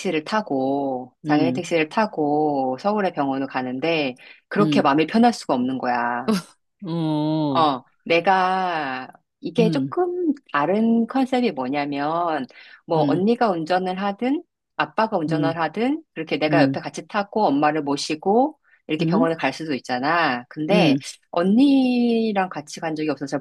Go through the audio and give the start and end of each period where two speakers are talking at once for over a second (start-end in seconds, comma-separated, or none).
none